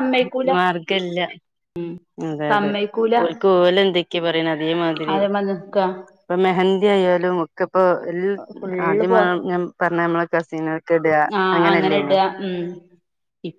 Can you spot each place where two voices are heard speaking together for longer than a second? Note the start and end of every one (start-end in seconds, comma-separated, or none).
none